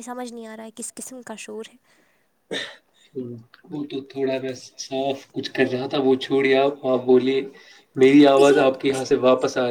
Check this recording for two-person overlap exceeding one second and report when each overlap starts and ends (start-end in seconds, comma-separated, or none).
none